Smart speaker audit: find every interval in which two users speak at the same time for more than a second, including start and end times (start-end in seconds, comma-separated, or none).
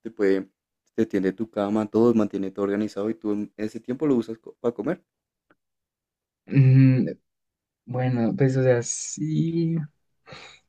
none